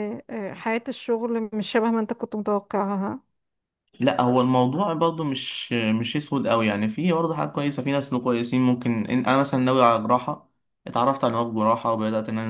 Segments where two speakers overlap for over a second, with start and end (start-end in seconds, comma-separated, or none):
none